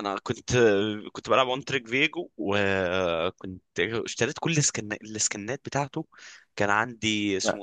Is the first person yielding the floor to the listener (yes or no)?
no